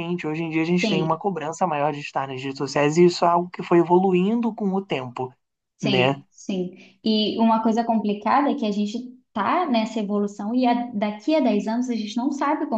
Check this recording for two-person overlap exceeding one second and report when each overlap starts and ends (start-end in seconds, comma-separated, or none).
none